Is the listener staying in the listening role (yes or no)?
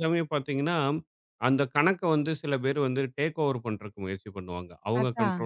yes